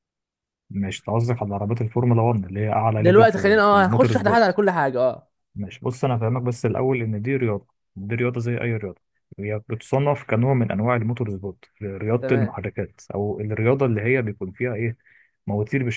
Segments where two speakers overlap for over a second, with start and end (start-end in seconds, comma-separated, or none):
3.0-4.6